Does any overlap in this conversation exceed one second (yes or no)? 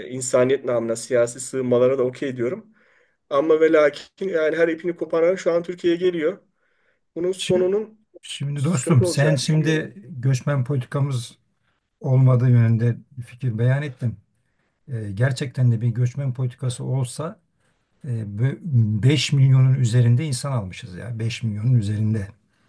yes